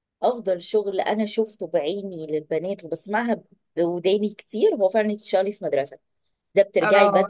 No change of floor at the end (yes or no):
yes